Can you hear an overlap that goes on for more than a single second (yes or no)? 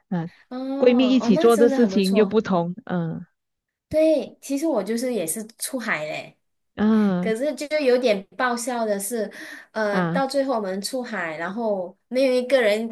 yes